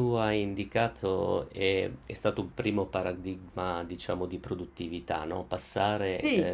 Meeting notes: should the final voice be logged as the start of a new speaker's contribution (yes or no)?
no